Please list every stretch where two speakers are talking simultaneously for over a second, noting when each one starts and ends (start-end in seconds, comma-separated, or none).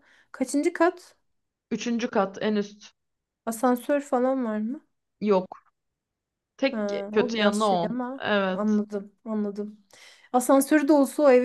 6.7-8.8